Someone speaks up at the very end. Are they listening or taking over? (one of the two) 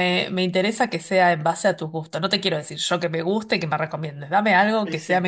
listening